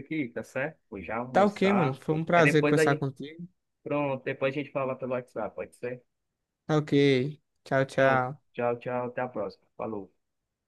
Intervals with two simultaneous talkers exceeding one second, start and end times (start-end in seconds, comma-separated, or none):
1.3-3.1